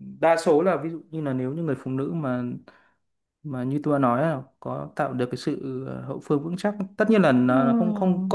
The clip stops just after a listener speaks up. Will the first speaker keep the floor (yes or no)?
yes